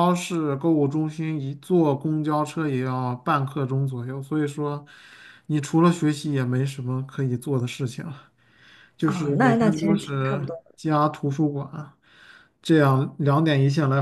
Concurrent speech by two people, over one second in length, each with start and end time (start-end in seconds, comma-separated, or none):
9.0-10.5